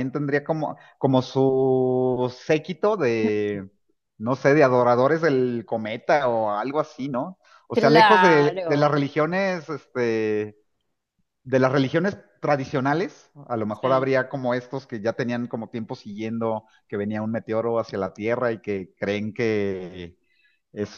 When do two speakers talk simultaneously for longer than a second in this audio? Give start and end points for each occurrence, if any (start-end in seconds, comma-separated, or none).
7.7-9.0